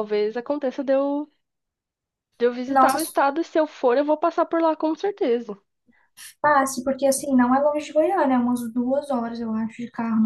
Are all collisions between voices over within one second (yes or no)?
yes